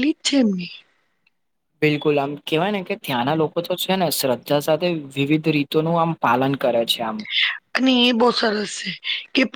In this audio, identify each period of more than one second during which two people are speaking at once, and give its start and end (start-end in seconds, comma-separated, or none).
none